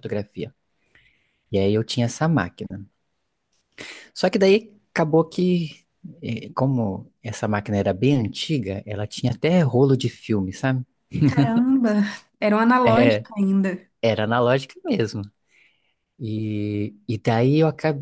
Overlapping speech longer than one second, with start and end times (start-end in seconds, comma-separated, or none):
none